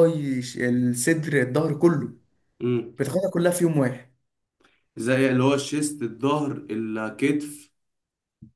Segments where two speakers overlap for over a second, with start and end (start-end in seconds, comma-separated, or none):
none